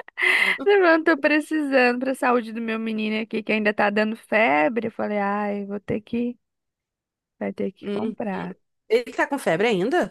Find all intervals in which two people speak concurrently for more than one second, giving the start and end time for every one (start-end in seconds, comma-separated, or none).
none